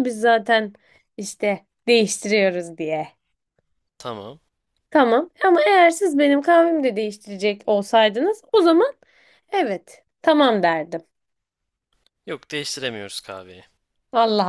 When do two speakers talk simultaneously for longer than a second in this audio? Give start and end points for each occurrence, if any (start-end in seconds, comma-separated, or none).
none